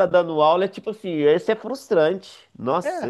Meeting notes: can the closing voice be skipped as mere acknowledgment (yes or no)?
no